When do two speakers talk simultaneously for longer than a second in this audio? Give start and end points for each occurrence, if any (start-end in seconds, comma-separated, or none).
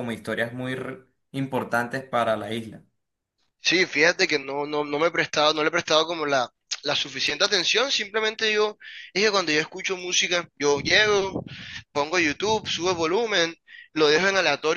none